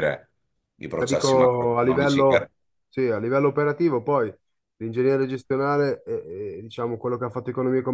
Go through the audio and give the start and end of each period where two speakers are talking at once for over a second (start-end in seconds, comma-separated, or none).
1.0-2.5